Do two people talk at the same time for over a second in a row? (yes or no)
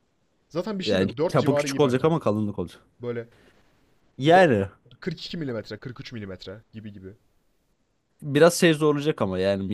yes